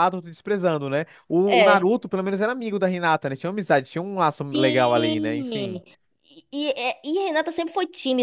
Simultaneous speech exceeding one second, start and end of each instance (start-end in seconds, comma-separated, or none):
4.5-5.8